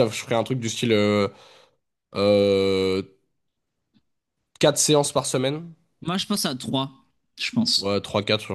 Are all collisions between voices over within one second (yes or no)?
yes